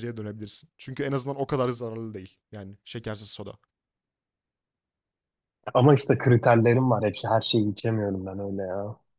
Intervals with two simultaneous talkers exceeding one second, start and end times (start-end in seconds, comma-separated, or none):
none